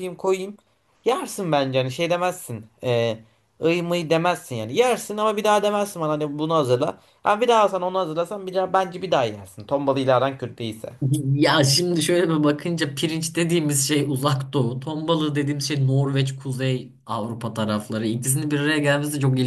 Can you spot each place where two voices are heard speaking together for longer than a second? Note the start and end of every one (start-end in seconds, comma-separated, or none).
none